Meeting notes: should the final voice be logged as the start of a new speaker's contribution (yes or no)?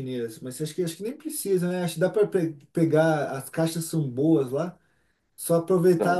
no